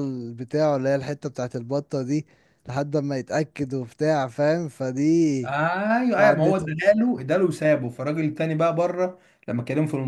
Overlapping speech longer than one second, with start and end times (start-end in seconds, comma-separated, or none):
none